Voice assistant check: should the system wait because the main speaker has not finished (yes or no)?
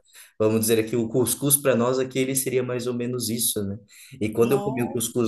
yes